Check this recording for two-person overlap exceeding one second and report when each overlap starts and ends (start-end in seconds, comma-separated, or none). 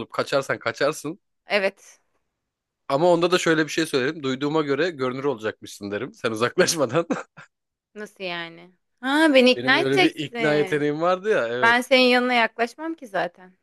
9.6-10.8